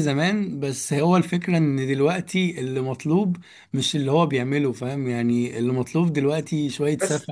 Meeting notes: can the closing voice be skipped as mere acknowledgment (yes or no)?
yes